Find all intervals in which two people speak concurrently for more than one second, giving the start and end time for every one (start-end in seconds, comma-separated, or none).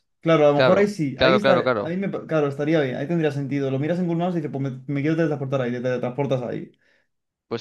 0.5-1.9